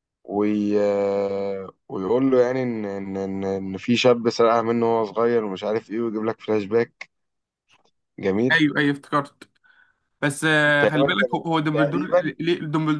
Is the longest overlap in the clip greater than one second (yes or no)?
yes